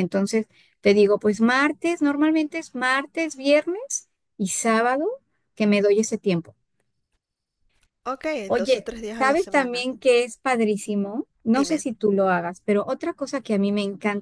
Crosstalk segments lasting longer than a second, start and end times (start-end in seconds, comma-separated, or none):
8.5-9.9